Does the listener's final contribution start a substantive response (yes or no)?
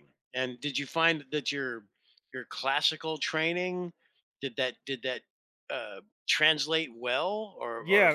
yes